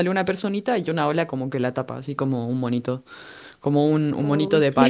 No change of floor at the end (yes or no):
yes